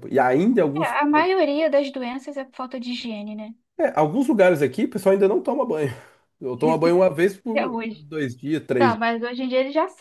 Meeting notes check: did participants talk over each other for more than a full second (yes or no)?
no